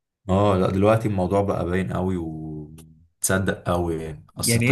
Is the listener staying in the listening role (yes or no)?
yes